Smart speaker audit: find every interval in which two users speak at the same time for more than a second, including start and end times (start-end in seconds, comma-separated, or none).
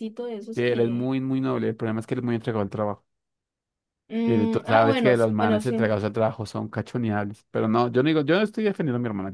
4.3-5.9